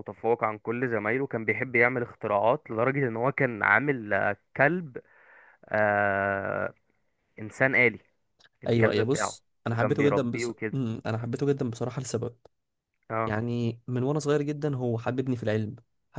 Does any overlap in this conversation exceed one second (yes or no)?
yes